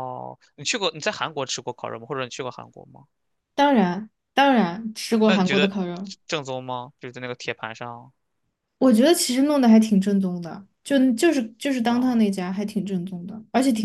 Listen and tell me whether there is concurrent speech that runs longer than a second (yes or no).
no